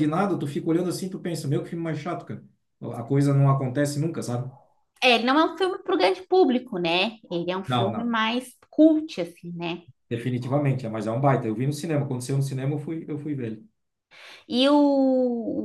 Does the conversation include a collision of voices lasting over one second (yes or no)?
no